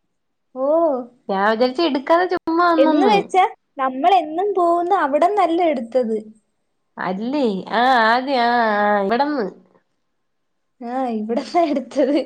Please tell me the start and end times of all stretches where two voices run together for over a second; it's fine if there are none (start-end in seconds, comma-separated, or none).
none